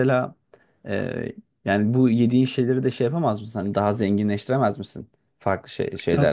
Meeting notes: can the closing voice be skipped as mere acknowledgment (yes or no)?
no